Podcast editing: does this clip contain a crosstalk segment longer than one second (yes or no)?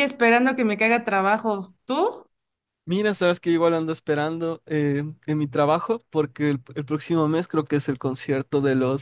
no